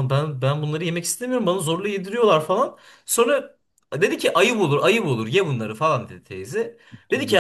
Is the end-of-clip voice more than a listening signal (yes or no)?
no